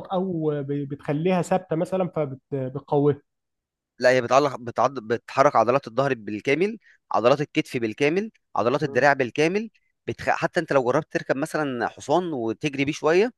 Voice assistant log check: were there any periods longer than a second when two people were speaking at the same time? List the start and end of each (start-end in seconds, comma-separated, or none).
none